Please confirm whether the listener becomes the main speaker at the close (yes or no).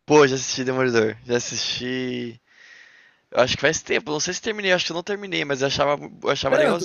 yes